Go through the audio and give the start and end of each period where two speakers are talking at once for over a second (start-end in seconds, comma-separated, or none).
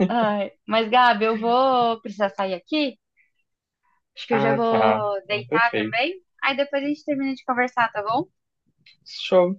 4.3-6.0